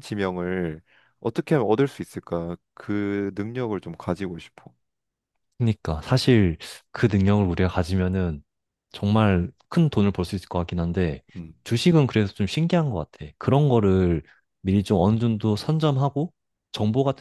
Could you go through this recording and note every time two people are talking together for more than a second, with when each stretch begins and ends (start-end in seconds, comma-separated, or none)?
none